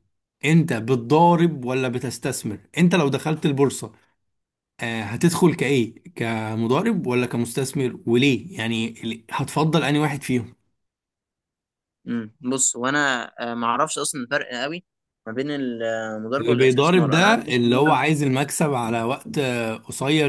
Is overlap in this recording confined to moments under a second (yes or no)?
no